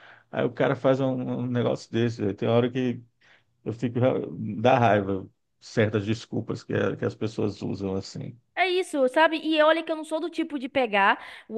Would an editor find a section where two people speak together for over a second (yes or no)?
no